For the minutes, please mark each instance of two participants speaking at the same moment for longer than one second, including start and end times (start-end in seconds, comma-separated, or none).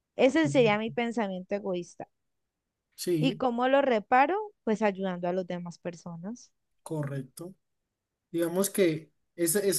none